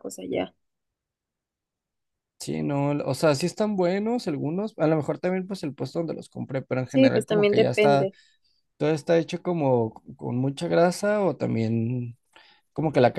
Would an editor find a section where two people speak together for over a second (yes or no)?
yes